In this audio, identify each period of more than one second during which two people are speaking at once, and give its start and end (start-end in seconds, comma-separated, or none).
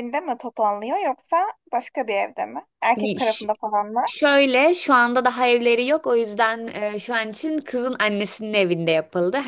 none